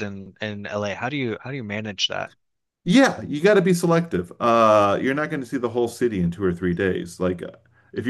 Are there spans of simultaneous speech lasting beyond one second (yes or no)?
no